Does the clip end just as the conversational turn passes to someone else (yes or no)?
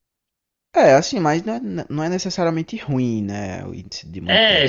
yes